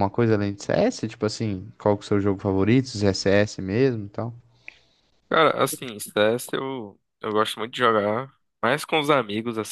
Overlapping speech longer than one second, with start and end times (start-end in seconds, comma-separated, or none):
none